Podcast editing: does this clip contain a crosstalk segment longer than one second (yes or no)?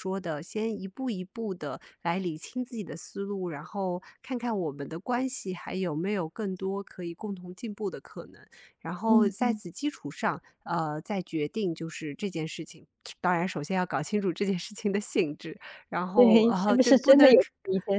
yes